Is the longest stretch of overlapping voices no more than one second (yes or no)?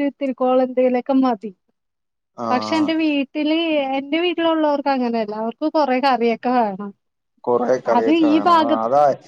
yes